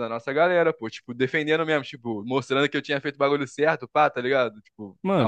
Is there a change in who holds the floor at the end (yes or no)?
yes